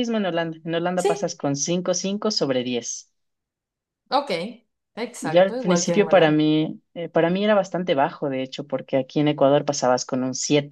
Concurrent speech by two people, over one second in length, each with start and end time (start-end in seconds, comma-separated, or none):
5.2-6.4